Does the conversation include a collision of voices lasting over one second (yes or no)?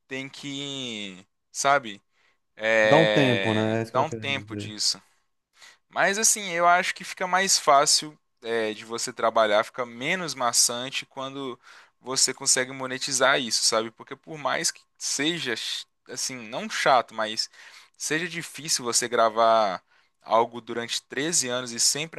yes